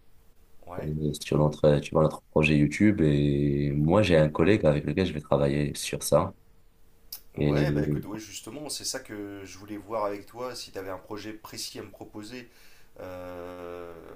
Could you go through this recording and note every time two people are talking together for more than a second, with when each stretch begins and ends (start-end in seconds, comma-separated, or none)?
none